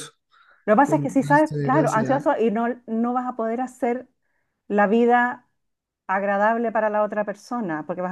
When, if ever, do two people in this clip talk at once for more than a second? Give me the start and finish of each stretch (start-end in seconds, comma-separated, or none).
0.8-2.2